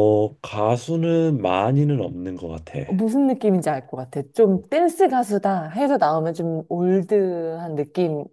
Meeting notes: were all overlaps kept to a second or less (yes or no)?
yes